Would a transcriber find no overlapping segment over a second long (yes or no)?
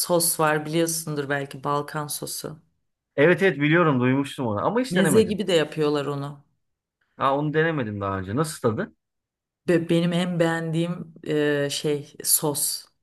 yes